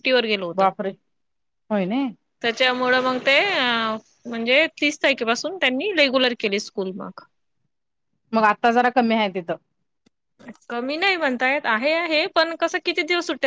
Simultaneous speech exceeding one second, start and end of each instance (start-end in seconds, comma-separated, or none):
none